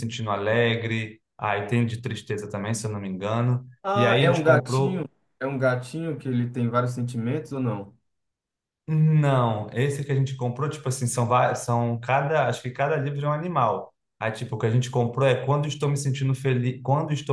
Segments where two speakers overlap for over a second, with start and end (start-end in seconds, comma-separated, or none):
3.8-5.1